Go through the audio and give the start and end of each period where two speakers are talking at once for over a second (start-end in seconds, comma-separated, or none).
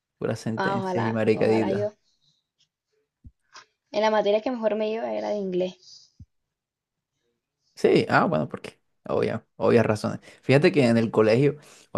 0.6-1.9